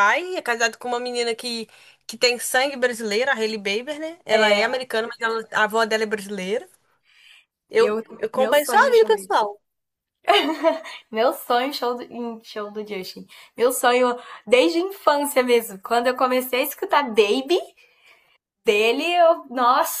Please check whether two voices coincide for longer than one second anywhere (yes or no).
yes